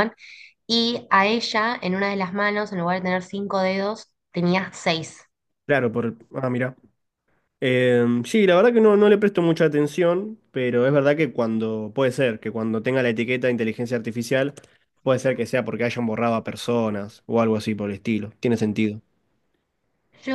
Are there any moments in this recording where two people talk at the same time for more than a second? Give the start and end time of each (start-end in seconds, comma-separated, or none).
none